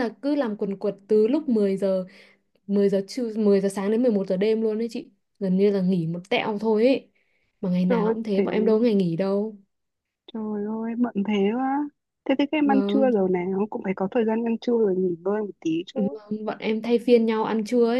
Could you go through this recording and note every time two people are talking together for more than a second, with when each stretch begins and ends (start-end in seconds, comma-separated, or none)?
none